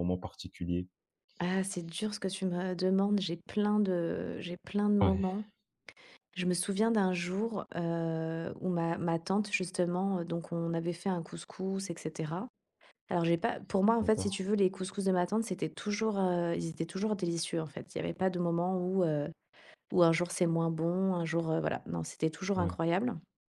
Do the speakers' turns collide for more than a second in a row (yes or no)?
no